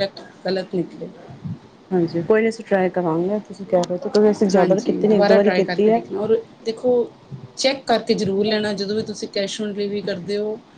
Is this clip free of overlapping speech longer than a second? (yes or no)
no